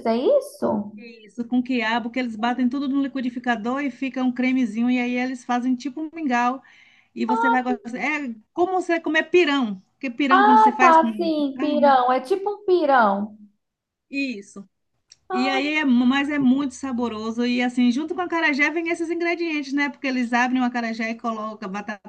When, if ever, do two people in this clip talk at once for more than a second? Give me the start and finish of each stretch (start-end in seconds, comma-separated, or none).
10.3-12.0